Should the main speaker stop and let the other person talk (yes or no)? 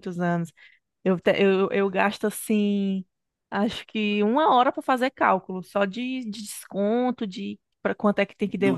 yes